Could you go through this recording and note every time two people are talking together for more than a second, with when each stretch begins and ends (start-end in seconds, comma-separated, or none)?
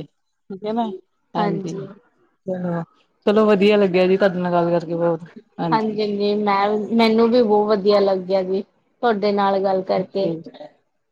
none